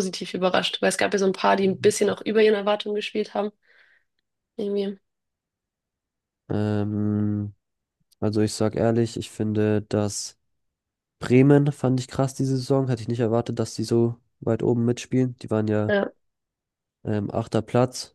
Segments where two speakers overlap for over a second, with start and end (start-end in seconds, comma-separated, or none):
none